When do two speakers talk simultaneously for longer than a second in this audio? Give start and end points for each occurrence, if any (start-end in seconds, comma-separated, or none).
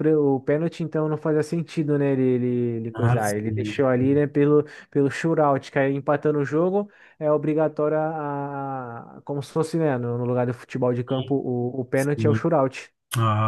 2.9-4.2